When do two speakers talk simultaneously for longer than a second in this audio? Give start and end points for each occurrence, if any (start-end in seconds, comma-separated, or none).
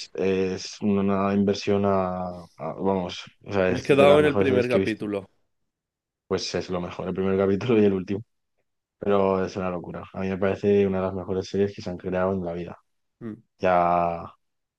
3.7-5.0